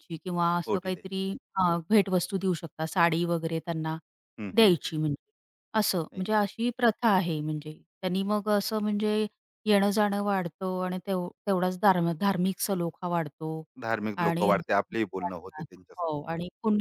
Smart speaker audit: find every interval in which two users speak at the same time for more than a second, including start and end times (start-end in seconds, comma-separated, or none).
14.2-16.1